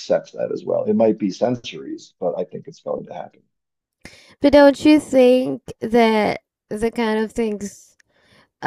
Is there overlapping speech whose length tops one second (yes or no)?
no